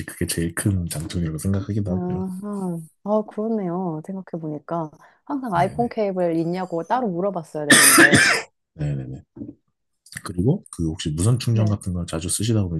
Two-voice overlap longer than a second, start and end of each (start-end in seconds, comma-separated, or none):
none